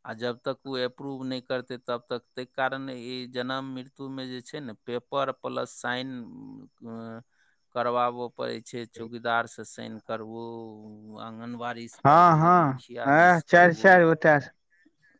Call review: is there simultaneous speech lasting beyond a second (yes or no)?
yes